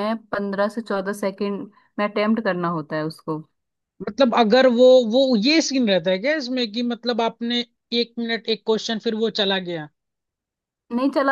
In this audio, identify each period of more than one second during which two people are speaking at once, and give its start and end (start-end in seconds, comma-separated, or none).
none